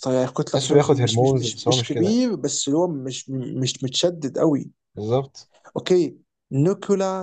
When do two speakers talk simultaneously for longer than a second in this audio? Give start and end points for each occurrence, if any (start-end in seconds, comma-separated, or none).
0.5-2.2